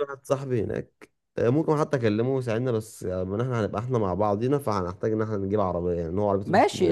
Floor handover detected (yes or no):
yes